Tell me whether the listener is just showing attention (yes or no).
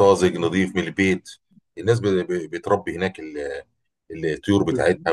yes